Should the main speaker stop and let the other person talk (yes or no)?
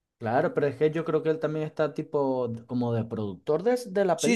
yes